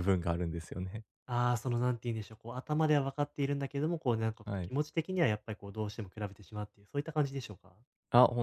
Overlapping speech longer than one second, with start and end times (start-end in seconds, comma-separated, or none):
none